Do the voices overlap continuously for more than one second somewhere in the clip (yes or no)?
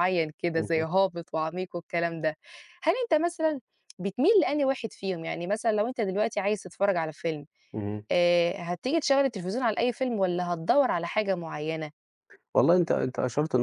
no